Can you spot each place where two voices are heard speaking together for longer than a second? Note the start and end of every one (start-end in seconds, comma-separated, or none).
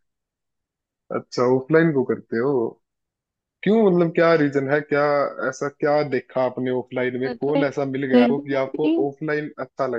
7.3-8.9